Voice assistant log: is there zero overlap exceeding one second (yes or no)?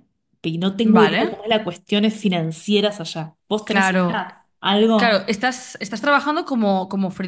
yes